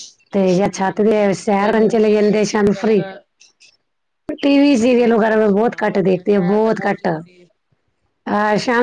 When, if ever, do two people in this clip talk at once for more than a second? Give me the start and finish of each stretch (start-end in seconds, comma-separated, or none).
0.6-3.0, 5.0-7.1